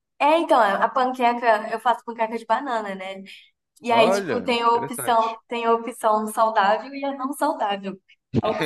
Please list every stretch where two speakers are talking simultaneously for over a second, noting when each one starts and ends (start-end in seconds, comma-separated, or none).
3.9-5.4